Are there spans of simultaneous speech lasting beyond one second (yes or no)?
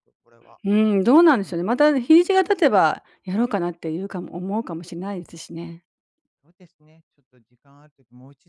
no